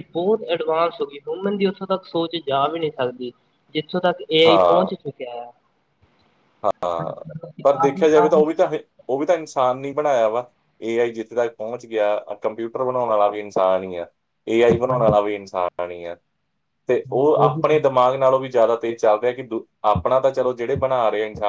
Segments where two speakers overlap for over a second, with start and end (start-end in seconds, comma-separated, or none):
none